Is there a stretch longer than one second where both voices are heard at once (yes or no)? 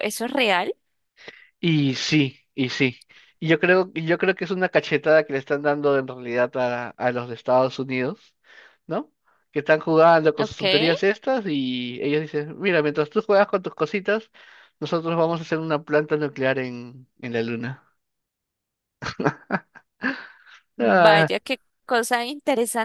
no